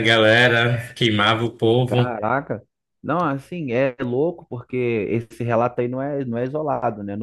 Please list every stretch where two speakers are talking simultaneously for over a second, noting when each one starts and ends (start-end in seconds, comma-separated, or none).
none